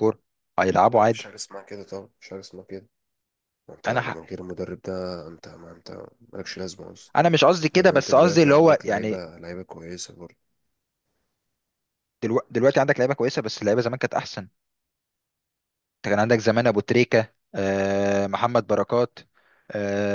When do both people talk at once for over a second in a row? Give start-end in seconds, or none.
7.7-9.2